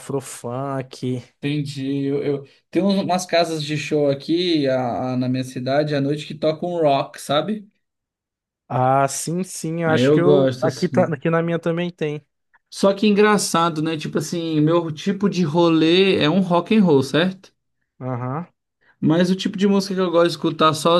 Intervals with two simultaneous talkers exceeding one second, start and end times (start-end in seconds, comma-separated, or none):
9.9-11.2